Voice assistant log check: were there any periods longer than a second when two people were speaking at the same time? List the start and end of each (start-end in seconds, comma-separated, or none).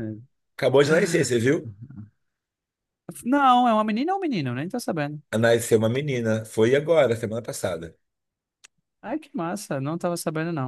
none